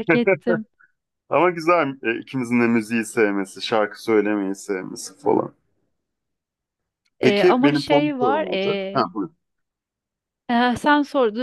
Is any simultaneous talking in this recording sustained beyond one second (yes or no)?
yes